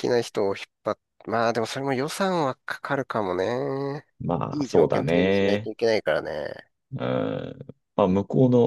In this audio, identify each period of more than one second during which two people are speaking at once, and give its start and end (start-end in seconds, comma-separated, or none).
4.5-5.7